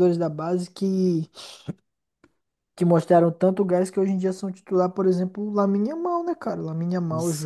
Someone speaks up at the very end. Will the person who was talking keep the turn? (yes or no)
no